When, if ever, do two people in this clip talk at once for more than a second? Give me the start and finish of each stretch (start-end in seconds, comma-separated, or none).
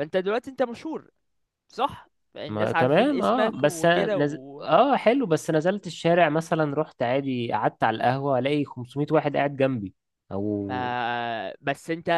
2.5-4.7